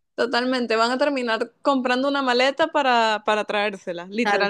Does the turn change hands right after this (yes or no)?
yes